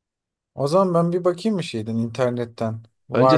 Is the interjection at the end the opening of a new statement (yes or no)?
yes